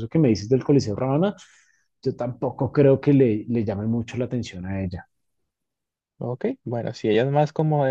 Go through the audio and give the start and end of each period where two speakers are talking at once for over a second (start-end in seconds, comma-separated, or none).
none